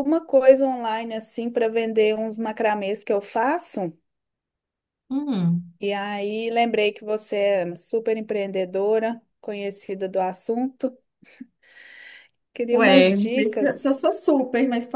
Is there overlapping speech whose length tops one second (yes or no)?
yes